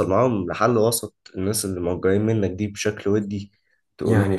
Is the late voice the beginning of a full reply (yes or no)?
yes